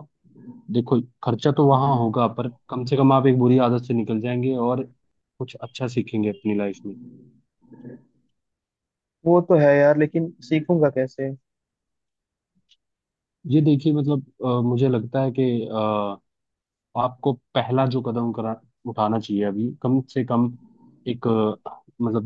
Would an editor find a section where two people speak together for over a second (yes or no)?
no